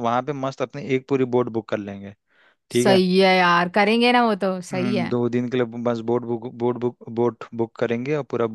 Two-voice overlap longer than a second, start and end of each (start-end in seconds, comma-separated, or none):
none